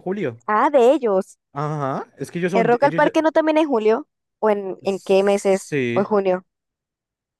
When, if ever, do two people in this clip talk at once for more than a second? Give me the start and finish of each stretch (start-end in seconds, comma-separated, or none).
4.8-6.1